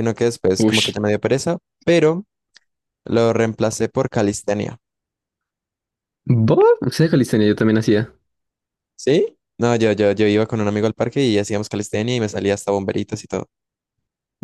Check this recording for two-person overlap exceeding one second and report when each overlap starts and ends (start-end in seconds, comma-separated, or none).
none